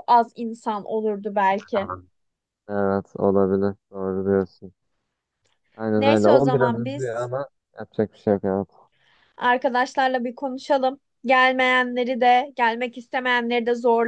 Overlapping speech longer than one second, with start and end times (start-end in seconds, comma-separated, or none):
6.0-7.3